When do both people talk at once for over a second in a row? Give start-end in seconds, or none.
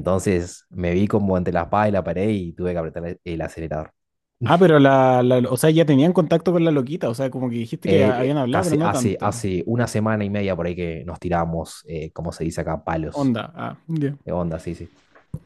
7.8-9.5